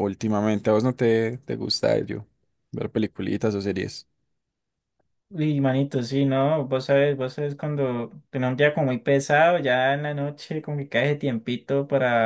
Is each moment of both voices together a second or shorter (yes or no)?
yes